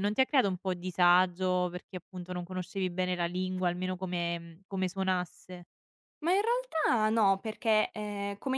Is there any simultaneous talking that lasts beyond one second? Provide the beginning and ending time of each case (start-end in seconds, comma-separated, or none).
none